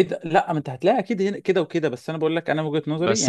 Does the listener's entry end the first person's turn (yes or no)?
yes